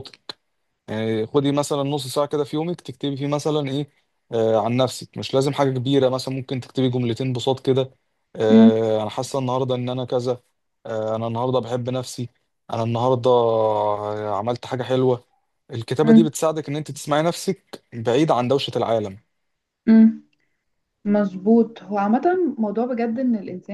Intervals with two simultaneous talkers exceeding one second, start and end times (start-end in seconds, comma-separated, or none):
none